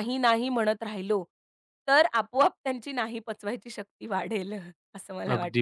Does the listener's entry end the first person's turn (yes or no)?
yes